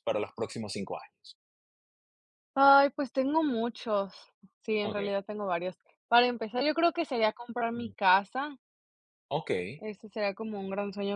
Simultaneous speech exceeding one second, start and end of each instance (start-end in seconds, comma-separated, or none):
none